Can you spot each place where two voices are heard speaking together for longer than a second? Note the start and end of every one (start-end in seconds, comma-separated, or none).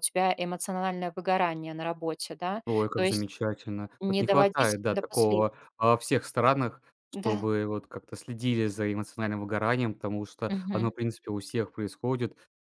4.0-5.4